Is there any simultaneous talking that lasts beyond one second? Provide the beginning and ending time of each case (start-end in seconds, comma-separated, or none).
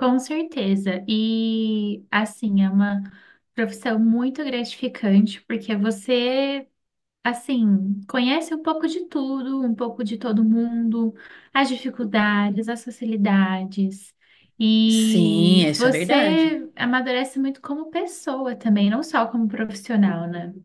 14.9-16.6